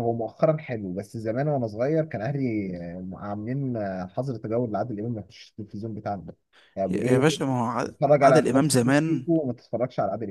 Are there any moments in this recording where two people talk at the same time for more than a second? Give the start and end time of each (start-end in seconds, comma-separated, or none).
7.9-9.3